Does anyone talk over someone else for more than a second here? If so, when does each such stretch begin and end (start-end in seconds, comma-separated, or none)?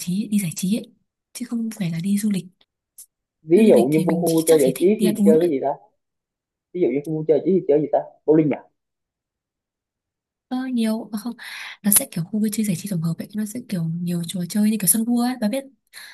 3.5-5.5